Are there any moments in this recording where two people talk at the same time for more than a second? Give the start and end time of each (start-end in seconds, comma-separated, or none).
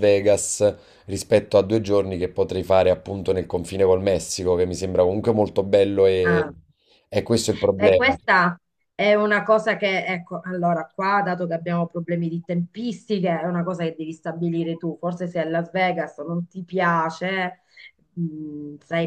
none